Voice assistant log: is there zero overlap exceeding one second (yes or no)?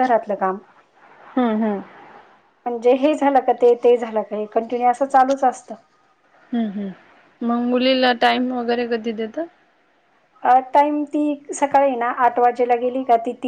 yes